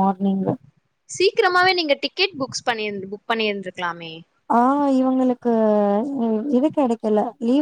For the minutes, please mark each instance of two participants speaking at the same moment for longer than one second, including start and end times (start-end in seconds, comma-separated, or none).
none